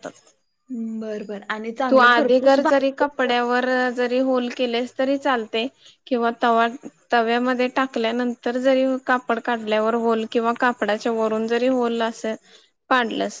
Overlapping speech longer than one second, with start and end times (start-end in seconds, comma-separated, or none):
1.9-3.5